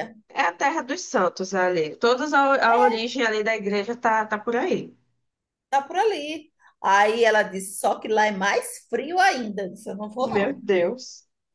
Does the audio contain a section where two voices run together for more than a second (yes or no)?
no